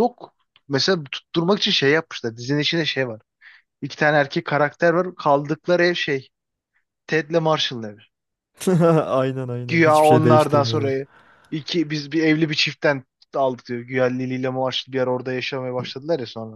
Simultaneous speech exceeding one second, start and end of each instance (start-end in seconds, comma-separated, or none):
9.7-11.0